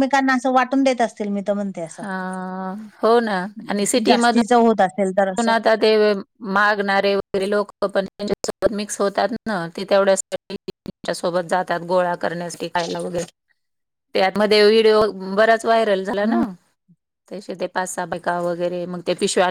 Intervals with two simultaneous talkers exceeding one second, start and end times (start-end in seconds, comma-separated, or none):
none